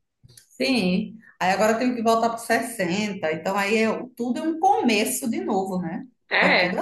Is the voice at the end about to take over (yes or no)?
yes